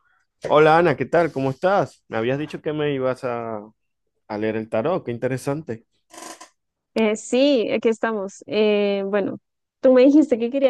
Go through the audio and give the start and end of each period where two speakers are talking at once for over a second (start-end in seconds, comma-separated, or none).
none